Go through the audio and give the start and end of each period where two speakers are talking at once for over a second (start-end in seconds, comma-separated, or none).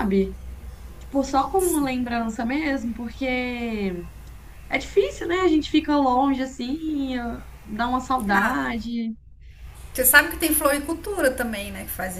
none